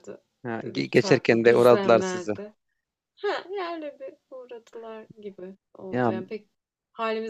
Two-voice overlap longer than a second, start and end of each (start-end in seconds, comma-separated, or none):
0.6-2.3